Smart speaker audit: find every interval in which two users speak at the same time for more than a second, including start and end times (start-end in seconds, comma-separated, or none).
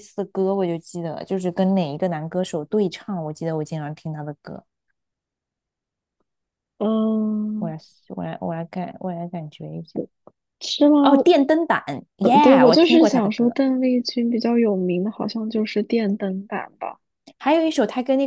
12.2-13.6